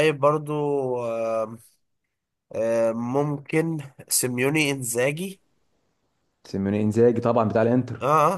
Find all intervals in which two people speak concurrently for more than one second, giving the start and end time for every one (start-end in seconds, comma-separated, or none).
none